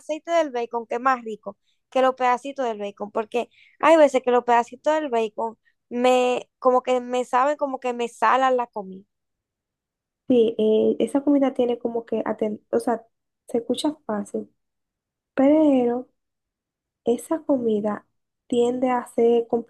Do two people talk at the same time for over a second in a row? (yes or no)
no